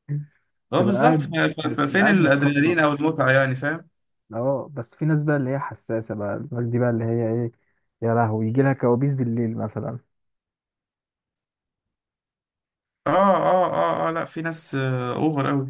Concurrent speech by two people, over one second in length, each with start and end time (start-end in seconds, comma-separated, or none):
0.8-2.8